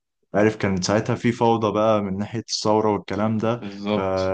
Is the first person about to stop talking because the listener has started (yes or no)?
no